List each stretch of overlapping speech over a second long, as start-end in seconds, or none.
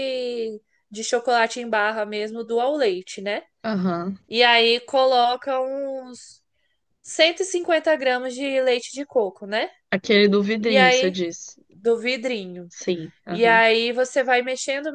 none